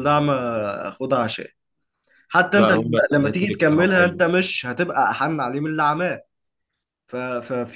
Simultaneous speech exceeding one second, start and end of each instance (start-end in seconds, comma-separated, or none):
2.5-4.2